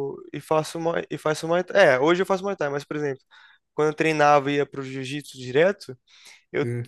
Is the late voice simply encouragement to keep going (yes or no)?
yes